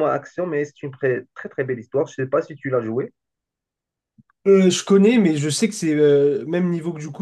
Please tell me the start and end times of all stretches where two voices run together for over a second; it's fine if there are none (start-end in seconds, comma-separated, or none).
none